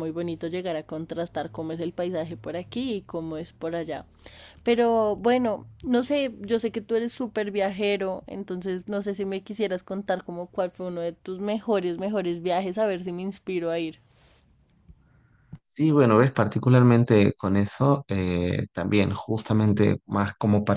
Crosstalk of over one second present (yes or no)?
no